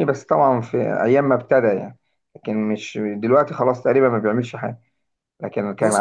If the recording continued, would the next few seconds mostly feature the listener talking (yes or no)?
yes